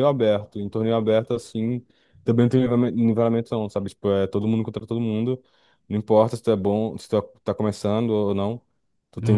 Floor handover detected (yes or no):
no